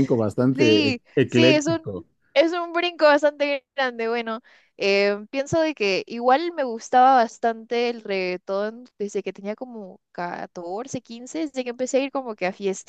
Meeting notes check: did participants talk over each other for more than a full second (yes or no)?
yes